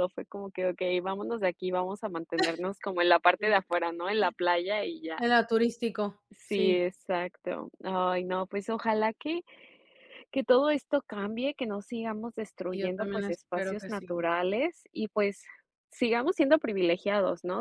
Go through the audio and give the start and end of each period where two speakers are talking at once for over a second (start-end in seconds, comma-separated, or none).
12.7-14.2